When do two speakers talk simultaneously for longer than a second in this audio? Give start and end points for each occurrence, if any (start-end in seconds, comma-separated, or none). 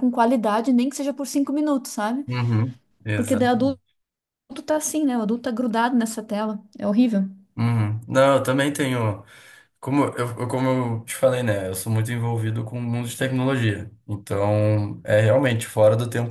none